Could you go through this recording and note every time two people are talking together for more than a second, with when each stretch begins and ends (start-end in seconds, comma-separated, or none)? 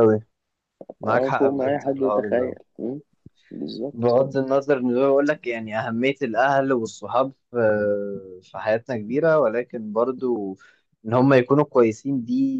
1.0-2.5